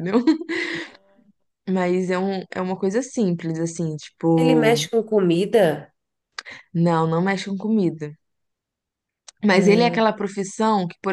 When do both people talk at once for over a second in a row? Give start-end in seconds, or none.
none